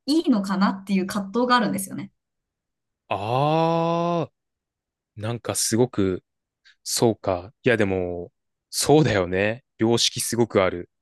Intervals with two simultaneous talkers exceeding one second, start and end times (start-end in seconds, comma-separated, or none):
none